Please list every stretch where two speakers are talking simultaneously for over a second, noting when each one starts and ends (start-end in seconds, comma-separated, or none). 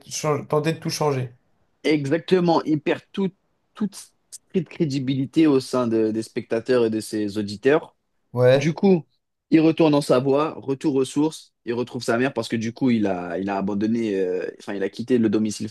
none